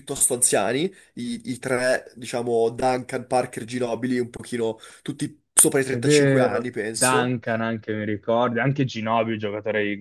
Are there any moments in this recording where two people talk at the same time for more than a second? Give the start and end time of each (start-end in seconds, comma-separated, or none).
5.9-7.4